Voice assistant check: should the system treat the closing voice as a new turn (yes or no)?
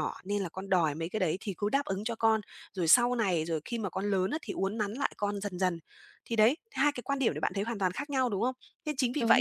no